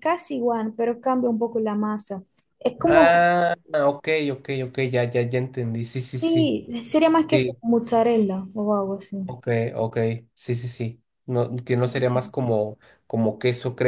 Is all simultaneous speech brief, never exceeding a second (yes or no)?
yes